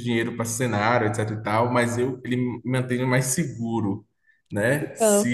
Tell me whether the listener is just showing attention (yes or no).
yes